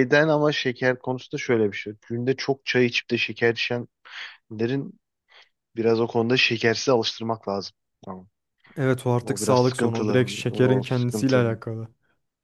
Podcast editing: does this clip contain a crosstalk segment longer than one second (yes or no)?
yes